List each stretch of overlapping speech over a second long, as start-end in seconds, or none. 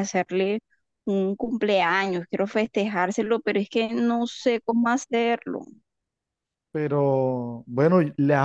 none